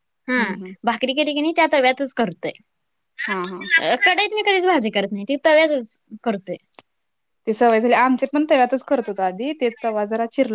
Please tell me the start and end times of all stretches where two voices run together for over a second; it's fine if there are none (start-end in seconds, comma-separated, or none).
none